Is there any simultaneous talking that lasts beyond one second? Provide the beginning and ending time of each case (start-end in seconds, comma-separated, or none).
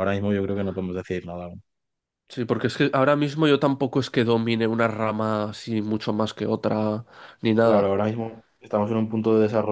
none